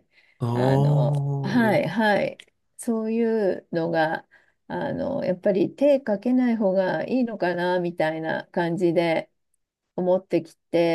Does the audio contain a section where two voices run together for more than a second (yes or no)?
yes